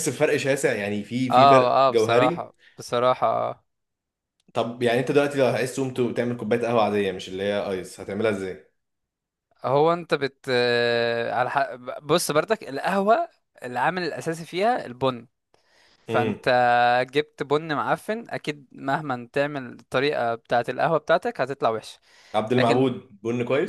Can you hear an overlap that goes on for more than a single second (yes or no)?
yes